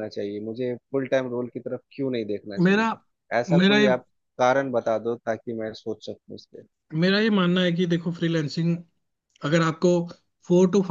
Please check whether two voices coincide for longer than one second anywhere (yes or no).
no